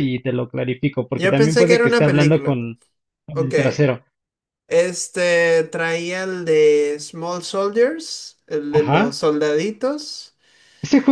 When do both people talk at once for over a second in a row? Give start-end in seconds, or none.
1.1-2.6